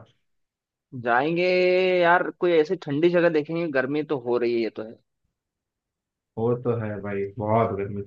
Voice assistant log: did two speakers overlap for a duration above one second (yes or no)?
no